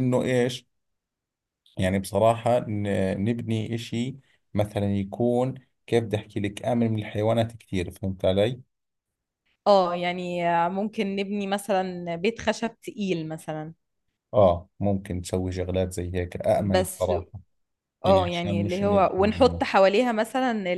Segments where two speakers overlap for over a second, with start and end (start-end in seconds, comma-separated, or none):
18.0-19.6